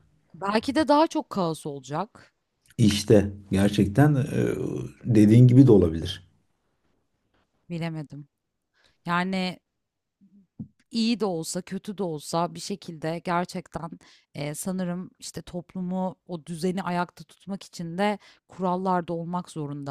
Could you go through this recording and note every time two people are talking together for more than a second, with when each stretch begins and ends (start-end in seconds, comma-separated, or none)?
none